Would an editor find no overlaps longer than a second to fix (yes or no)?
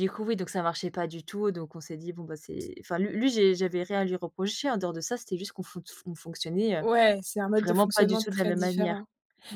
no